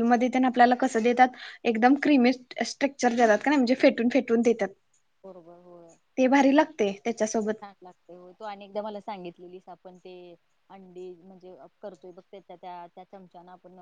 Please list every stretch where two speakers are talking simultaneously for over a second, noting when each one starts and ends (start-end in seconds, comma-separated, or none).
none